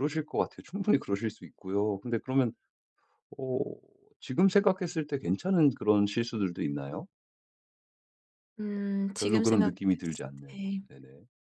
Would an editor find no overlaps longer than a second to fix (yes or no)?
no